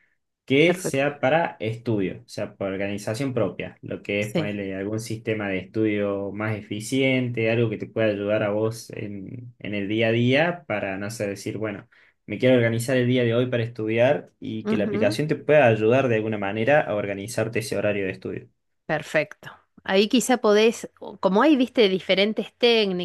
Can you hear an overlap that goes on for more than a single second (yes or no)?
no